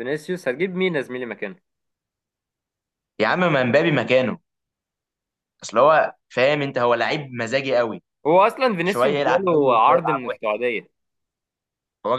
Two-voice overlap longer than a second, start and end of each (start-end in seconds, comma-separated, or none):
8.8-10.4